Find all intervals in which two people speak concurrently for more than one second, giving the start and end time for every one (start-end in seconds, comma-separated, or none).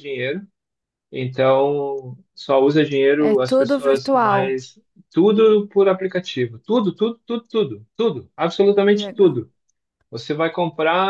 3.2-4.6